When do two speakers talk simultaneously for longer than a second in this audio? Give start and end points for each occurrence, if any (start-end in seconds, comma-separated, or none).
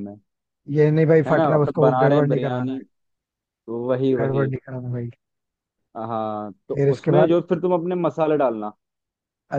1.3-2.8